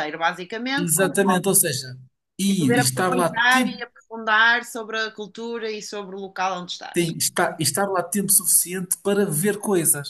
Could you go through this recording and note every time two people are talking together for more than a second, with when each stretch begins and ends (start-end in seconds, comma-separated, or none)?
2.5-3.8